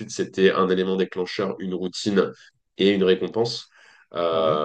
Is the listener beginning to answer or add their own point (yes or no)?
no